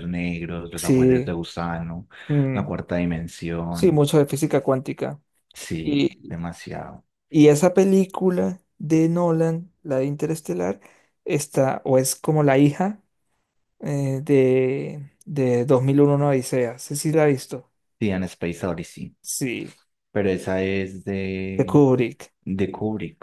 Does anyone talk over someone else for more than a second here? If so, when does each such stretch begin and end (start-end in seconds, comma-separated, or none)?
none